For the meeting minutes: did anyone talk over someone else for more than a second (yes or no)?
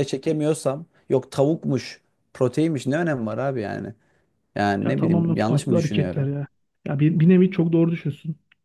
yes